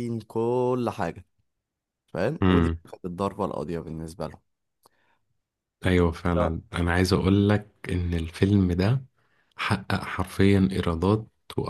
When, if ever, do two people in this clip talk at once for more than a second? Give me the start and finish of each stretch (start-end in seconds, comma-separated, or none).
none